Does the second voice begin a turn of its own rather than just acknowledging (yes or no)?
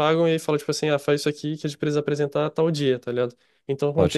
no